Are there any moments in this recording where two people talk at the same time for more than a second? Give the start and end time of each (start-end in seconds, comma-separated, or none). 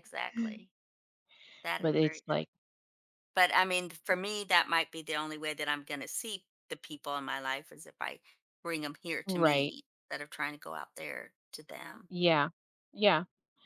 none